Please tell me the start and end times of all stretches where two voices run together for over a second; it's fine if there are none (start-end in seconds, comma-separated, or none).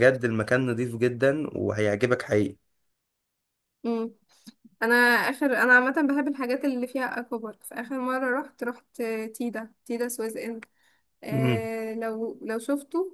none